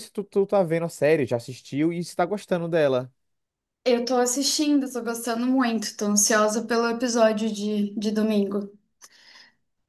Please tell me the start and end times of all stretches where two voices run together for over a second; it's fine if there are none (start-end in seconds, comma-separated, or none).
none